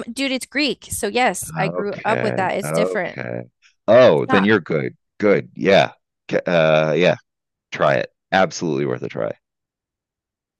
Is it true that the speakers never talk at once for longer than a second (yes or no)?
no